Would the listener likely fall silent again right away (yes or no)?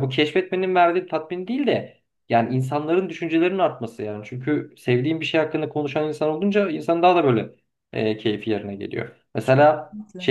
yes